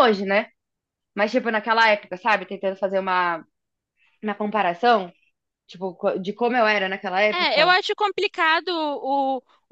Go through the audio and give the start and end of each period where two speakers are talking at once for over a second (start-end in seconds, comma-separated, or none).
none